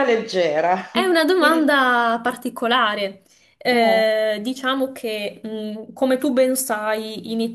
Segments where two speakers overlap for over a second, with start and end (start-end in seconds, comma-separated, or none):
none